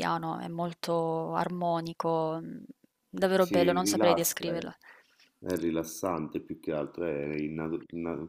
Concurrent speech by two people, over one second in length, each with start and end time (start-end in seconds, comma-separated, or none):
3.4-4.7